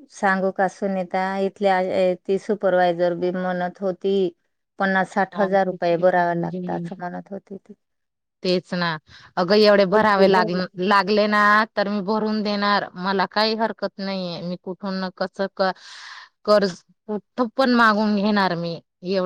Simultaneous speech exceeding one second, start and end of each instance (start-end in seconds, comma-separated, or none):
none